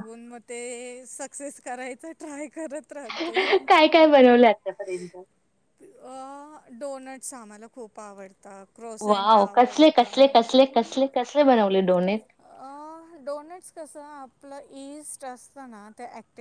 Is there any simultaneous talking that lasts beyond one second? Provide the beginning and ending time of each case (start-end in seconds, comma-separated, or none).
9.1-10.5